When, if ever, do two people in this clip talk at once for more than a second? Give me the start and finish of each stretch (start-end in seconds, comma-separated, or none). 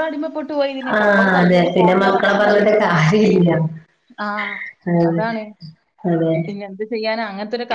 0.9-2.8